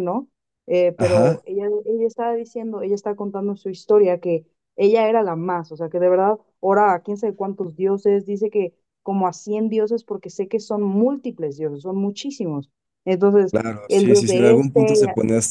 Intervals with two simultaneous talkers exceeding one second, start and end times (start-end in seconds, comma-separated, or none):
13.5-15.0